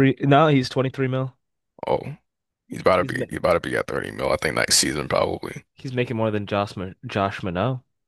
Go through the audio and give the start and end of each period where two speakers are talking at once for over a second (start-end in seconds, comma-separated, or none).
none